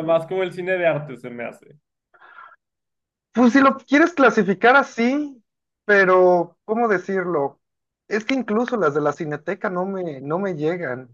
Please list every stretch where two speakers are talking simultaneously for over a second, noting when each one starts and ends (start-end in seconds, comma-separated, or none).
none